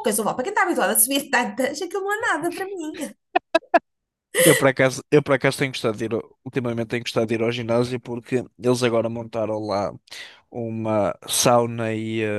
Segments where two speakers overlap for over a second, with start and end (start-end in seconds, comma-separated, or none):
none